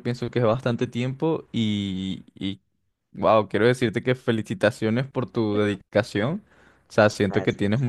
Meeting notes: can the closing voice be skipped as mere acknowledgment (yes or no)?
yes